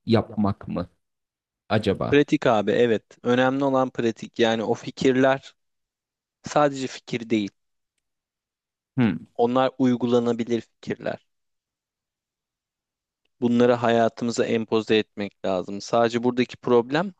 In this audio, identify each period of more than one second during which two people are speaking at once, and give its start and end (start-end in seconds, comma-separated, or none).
none